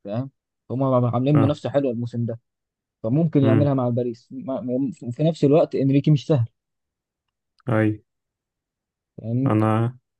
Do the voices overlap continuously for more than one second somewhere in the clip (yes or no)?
no